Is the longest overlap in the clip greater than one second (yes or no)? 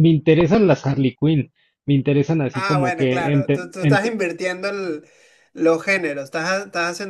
yes